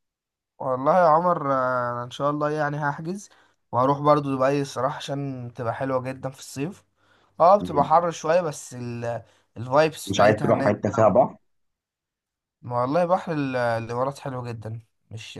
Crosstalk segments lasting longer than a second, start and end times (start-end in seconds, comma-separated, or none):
10.1-11.3